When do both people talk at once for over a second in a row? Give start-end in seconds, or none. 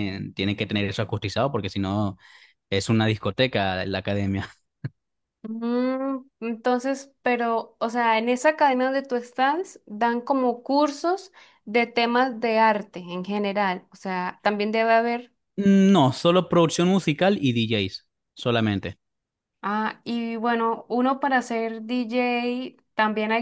none